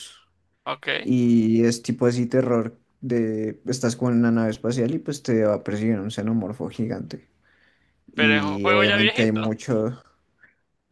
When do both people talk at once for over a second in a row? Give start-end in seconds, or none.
8.2-9.4